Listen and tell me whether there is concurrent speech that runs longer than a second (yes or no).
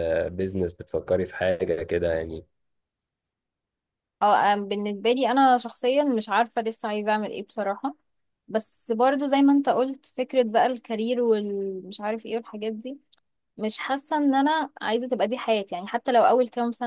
no